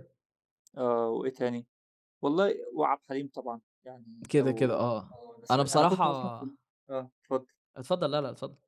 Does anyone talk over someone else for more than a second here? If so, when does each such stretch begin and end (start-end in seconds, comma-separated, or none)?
4.3-6.0